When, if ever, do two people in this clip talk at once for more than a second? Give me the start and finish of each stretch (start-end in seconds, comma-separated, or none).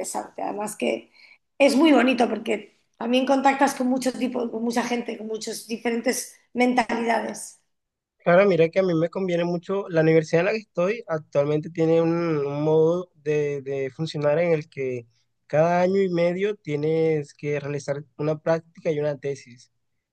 none